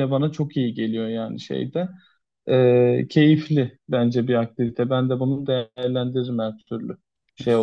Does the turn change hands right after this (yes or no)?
no